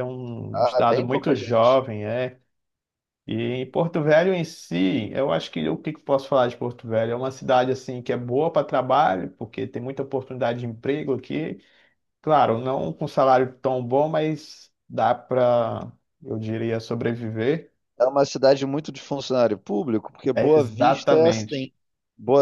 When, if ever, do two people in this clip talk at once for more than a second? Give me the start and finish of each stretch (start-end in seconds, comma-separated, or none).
0.5-1.8, 20.3-21.7